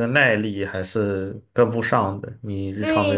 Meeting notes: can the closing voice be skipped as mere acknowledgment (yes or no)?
no